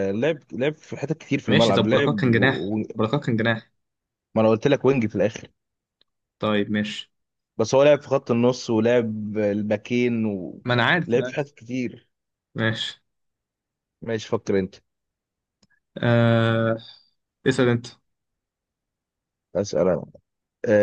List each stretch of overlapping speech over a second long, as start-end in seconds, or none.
1.5-2.8